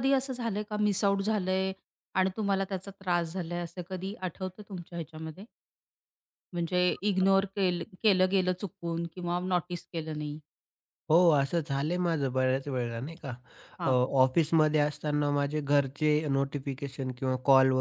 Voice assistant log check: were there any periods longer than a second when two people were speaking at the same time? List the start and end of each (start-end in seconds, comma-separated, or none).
none